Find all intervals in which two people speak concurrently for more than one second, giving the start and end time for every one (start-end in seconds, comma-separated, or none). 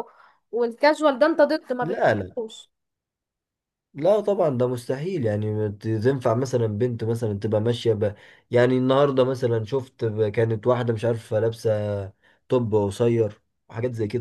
none